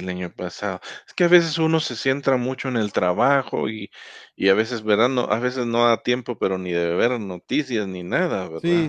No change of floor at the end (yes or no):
no